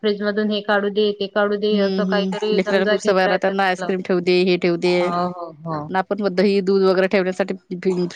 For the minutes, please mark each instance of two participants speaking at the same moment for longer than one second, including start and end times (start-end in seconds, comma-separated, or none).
1.7-5.3